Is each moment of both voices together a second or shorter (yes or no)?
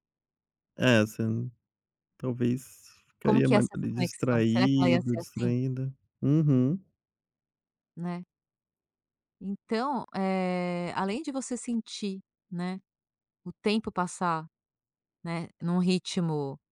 no